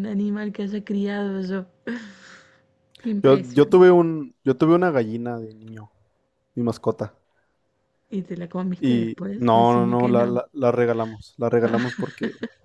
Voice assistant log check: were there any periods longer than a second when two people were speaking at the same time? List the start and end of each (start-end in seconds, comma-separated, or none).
8.8-10.4